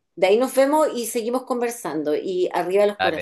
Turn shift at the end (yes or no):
no